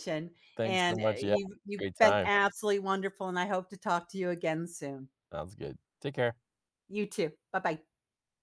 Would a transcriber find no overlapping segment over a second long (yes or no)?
no